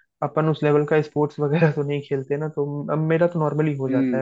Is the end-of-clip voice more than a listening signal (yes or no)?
no